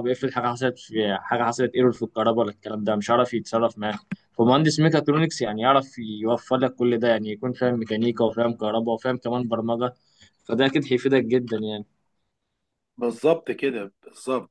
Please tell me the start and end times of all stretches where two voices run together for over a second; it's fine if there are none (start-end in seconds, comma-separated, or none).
none